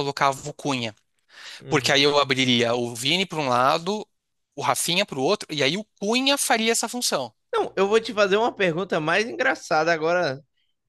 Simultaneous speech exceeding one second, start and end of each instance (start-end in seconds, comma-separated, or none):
none